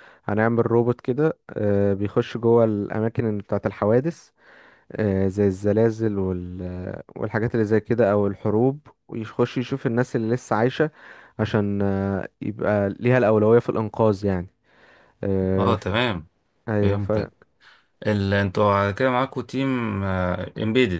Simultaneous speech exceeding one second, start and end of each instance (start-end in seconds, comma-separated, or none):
none